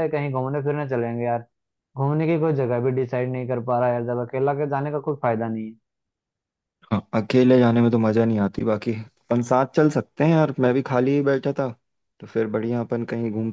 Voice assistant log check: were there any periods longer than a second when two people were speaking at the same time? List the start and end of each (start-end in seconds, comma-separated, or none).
none